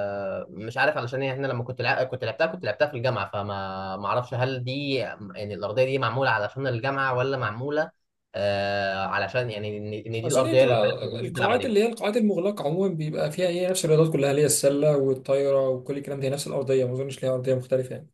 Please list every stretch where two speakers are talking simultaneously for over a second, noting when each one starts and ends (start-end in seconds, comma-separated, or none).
10.2-11.7